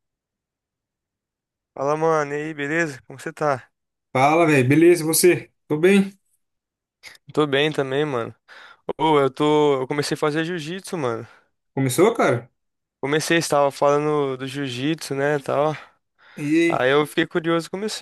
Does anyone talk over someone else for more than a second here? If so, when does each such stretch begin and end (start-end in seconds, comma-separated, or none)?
none